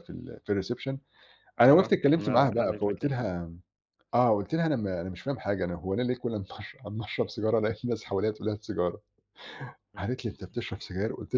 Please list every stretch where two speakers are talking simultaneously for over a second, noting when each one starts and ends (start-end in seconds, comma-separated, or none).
1.6-3.1